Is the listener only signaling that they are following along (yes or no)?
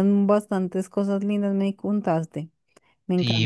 no